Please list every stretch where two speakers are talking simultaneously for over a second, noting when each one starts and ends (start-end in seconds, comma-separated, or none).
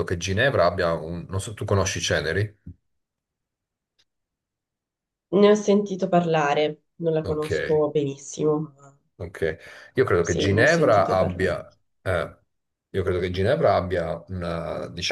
10.2-11.6